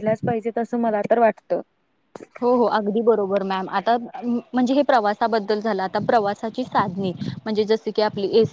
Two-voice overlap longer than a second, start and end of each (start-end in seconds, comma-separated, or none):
none